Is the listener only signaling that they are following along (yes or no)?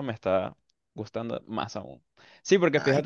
yes